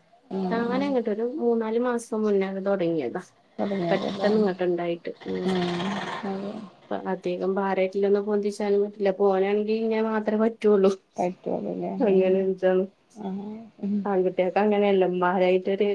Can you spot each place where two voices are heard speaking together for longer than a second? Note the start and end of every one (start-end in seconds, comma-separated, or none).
none